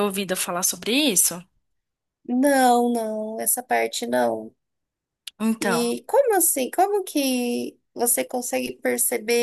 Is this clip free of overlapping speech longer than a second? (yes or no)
yes